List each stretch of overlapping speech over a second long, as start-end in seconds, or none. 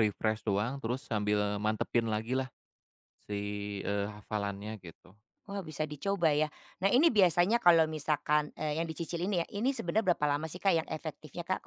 none